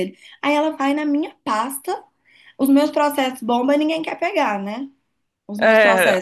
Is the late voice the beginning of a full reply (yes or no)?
no